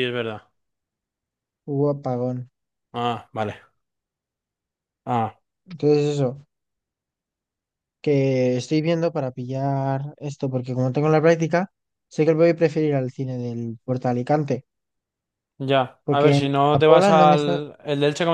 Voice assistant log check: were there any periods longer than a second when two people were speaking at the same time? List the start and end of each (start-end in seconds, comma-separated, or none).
16.0-17.6